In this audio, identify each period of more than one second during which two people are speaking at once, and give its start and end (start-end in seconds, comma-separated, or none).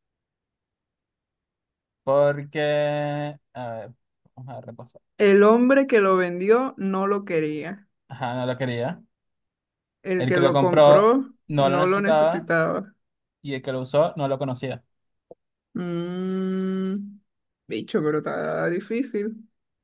10.2-12.5